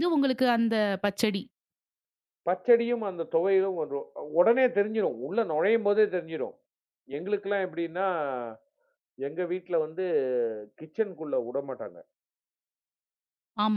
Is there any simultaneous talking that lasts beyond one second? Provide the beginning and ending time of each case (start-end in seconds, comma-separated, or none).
none